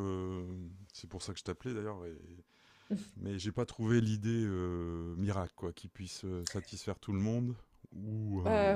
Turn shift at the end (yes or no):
yes